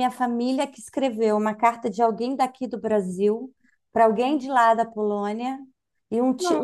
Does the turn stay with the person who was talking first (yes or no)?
yes